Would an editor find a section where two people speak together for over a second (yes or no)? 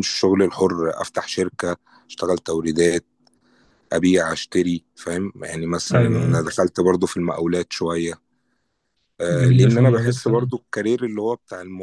yes